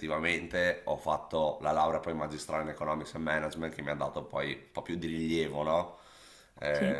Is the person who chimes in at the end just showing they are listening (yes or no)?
yes